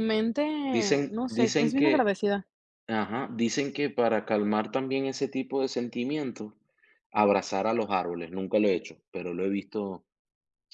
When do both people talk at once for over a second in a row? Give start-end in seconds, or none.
0.7-2.1